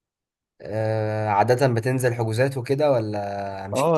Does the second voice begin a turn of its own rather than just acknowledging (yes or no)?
yes